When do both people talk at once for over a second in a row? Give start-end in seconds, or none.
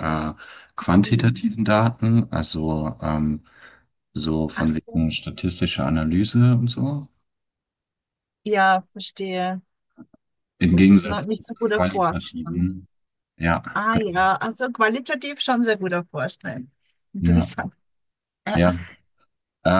10.7-12.7